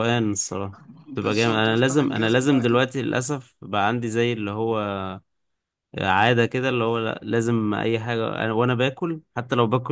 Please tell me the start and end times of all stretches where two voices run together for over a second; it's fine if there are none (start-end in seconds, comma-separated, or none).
1.1-2.8